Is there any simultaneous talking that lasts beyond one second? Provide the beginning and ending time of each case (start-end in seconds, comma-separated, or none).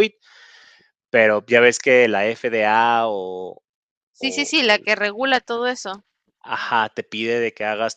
none